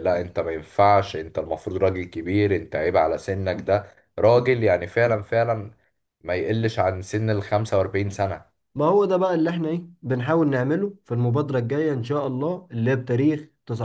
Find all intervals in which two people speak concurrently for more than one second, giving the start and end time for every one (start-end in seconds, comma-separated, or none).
none